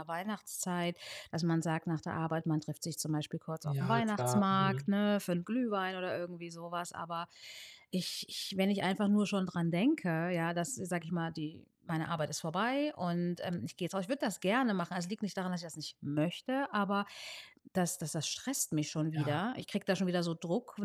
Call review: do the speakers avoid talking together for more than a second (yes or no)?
no